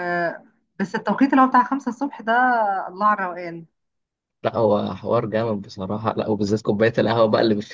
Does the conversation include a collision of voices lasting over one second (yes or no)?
no